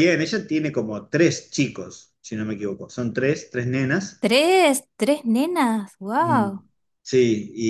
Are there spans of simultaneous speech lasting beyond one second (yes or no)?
no